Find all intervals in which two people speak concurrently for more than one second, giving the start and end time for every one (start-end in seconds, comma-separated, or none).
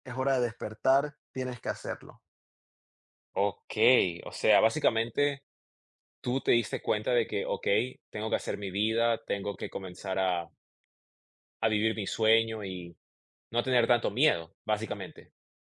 none